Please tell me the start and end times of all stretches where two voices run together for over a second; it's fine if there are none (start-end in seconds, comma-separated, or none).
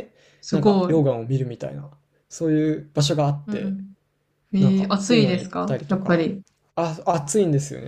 4.6-6.3